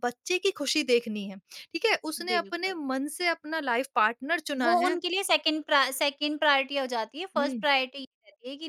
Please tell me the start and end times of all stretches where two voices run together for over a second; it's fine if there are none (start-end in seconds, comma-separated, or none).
none